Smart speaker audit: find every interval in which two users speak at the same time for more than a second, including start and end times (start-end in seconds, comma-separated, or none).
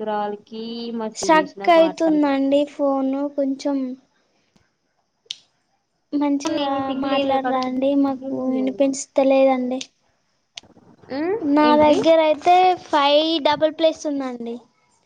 6.4-8.6